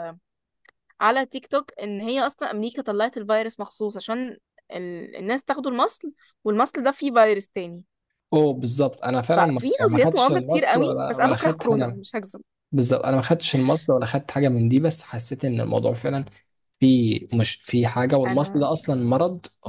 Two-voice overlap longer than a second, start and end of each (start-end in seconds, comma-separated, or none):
9.3-12.0